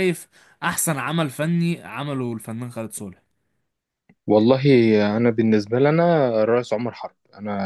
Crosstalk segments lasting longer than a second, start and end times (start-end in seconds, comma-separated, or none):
none